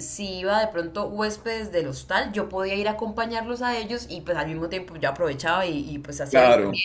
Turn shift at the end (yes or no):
no